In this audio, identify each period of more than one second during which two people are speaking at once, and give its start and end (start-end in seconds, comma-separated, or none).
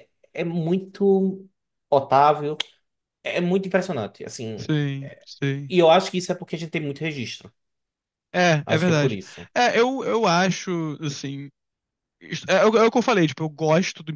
none